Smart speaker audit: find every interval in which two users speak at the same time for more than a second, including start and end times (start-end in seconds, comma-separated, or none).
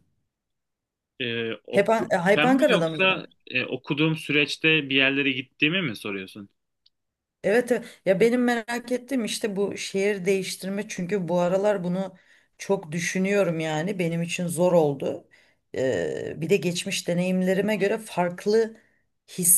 1.8-3.3